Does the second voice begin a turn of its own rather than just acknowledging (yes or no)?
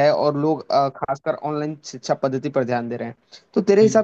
no